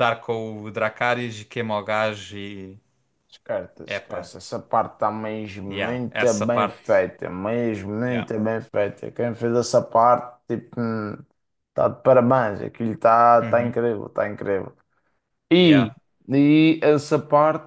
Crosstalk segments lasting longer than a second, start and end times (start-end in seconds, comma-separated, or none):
5.7-7.0